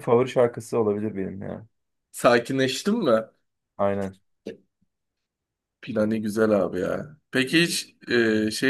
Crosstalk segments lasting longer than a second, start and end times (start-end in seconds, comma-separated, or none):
none